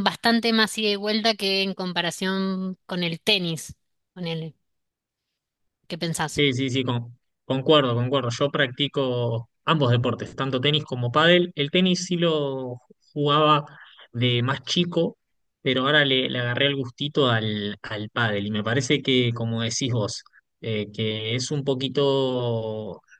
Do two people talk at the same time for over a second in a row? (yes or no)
no